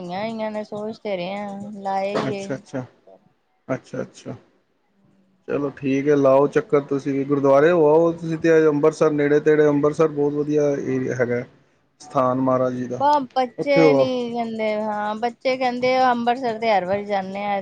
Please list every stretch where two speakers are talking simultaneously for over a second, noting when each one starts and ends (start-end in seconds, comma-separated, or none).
none